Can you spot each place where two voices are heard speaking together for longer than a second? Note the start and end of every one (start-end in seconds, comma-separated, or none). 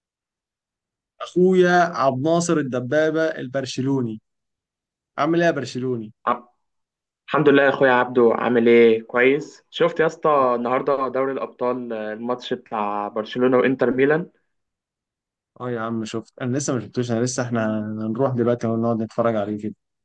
none